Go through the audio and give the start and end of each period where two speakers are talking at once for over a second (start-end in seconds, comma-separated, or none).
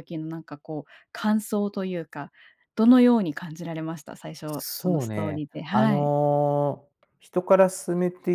4.5-6.1